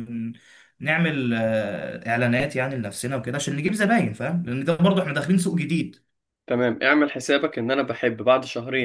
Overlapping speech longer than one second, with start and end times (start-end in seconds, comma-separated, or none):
none